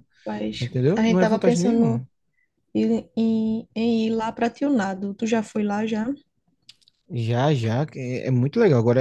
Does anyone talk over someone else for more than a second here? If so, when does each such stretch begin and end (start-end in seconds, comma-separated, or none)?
0.6-2.0